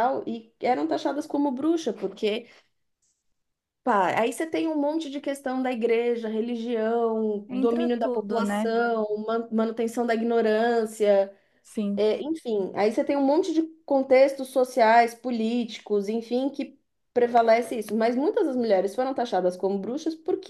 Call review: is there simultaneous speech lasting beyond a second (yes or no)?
yes